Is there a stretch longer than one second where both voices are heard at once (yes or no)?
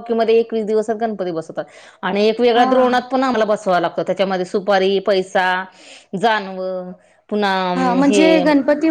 no